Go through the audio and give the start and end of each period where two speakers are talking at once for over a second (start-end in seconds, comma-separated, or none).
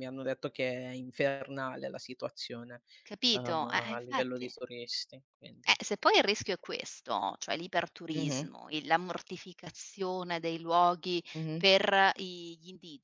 3.3-4.5